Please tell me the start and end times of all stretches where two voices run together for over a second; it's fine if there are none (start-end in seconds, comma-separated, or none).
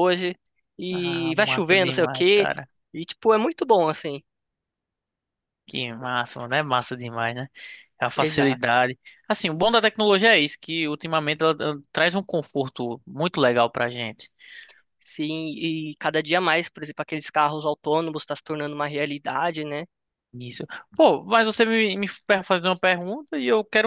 0.9-2.5